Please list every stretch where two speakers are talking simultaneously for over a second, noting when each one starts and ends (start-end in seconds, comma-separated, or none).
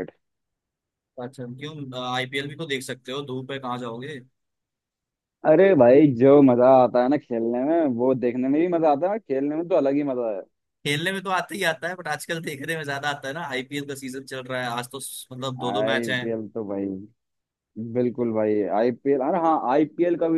none